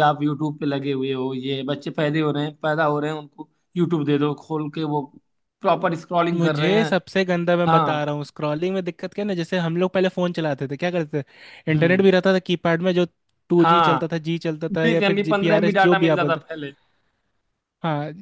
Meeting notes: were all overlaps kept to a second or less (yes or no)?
no